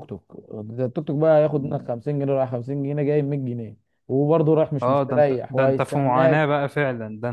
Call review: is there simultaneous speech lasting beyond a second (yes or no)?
yes